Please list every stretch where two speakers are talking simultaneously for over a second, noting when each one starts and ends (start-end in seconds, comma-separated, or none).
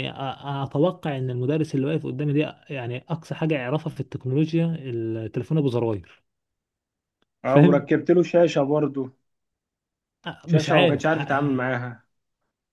10.4-11.7